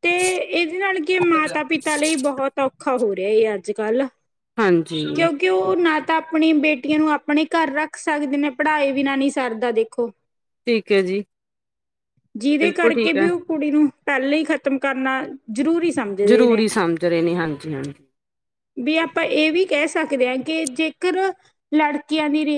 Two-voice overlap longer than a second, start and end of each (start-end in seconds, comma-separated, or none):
none